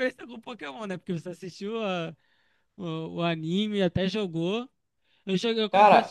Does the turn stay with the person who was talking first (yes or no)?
yes